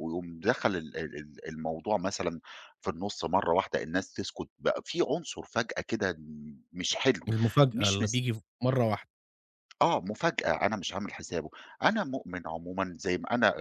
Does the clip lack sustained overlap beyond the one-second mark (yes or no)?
yes